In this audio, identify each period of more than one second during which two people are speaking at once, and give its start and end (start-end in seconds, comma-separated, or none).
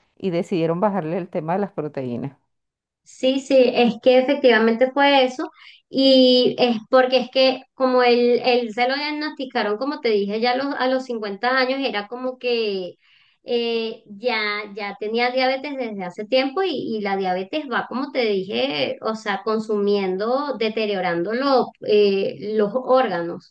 none